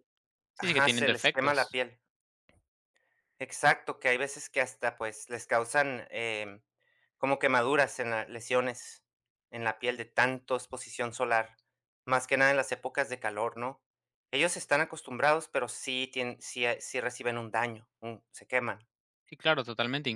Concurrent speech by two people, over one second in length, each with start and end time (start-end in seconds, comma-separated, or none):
0.6-1.8